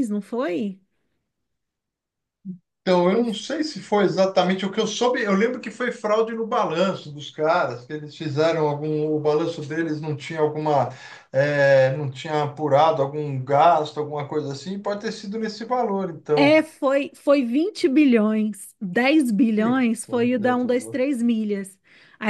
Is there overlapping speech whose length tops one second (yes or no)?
yes